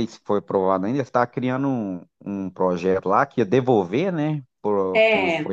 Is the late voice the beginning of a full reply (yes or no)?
yes